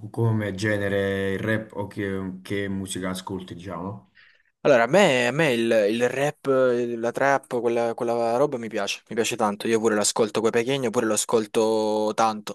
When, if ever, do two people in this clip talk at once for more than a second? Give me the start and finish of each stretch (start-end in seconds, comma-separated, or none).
none